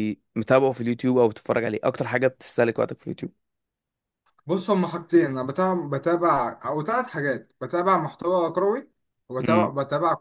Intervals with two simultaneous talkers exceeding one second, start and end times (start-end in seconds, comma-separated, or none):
none